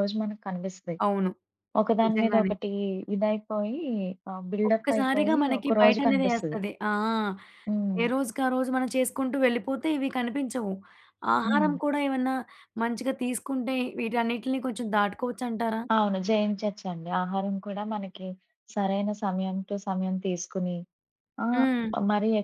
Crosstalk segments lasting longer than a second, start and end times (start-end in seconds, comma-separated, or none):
4.7-6.6